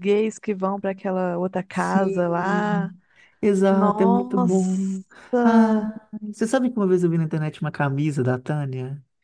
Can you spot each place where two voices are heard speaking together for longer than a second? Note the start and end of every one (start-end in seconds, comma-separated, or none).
1.7-2.9, 3.7-5.0